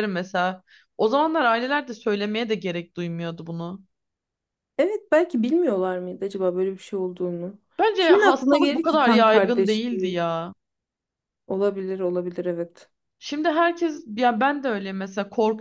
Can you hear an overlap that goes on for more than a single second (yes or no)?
yes